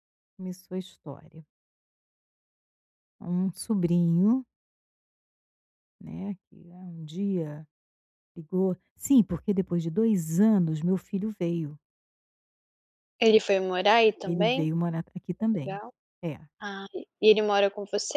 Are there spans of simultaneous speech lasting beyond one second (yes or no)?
no